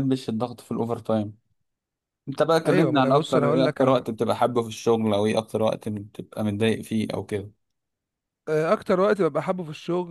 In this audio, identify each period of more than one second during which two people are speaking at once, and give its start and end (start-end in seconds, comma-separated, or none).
2.6-4.1